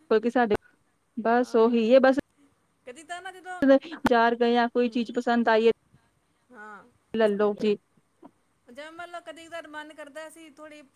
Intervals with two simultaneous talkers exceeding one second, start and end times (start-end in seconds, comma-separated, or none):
none